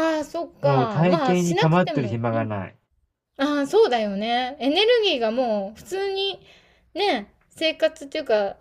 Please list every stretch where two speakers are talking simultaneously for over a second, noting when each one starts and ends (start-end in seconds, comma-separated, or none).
0.6-2.2